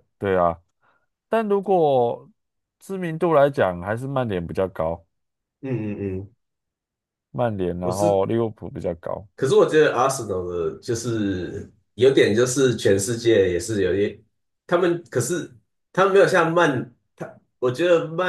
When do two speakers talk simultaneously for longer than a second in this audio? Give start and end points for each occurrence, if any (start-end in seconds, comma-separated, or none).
none